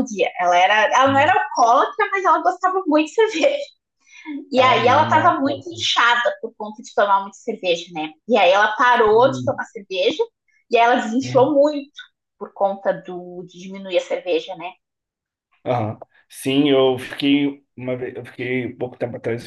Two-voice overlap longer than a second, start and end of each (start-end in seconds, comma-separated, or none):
4.5-5.8